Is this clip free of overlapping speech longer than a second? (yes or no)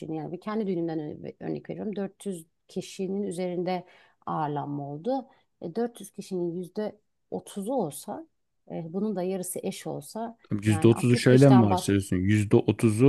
no